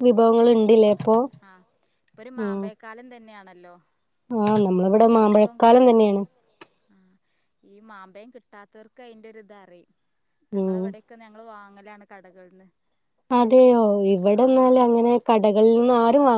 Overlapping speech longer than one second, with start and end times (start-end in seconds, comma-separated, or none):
none